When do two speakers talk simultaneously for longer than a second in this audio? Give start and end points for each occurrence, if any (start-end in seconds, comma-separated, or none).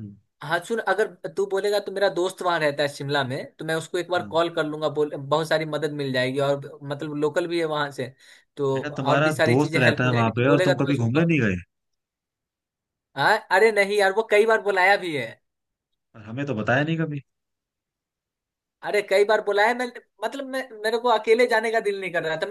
8.7-11.3